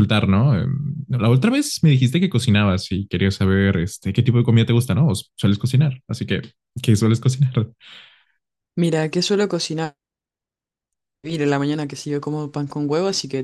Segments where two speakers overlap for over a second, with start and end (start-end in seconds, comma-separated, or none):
none